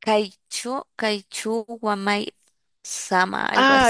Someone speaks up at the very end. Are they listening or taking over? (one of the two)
taking over